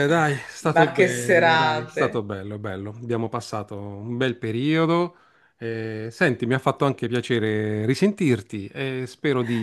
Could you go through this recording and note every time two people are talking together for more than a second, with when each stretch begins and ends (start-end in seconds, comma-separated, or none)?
0.7-2.3